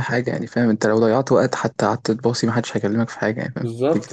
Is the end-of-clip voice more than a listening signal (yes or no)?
yes